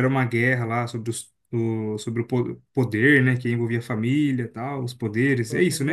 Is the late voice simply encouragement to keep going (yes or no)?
no